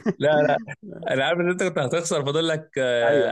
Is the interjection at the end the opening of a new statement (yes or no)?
yes